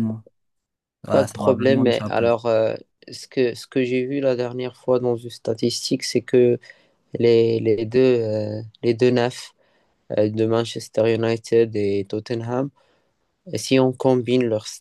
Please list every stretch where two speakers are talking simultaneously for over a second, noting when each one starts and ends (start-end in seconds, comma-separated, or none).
1.1-2.3